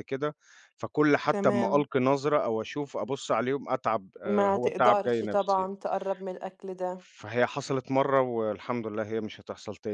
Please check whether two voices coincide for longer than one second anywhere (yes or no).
yes